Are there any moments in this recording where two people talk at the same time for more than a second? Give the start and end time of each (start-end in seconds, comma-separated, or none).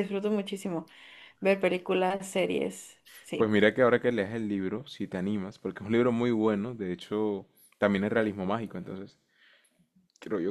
none